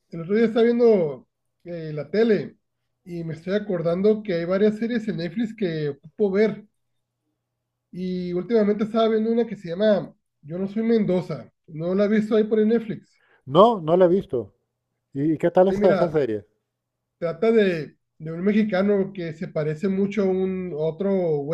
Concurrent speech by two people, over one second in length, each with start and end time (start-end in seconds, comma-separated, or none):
none